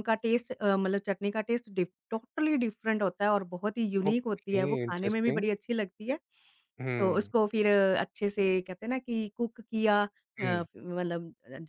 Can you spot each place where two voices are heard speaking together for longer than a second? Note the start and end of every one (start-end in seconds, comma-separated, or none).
4.1-5.5